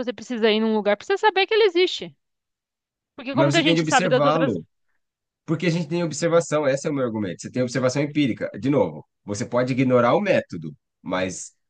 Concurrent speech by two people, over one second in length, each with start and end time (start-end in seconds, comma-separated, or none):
3.3-4.5